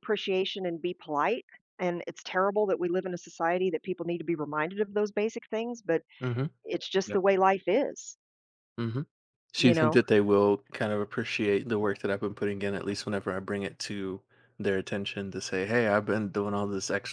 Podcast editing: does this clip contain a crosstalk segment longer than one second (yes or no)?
no